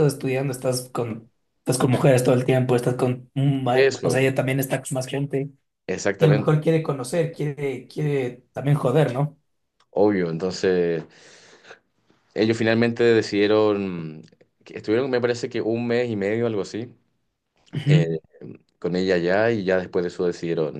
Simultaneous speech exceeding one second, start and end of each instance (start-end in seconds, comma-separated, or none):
none